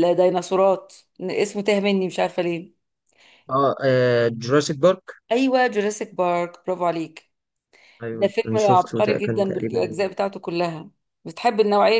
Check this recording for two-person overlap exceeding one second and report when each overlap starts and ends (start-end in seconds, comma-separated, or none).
8.1-9.8